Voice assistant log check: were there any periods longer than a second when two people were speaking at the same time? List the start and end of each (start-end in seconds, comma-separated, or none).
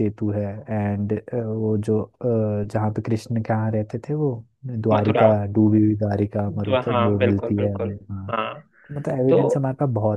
6.7-8.3